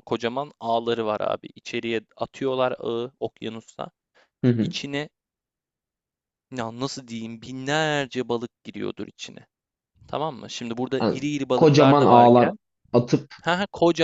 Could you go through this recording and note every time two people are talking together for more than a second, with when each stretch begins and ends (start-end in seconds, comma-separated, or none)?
11.0-12.5